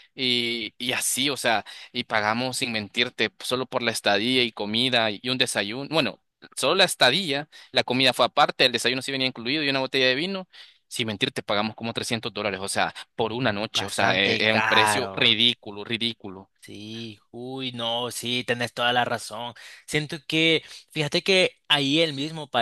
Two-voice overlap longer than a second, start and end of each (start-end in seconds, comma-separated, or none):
13.7-15.4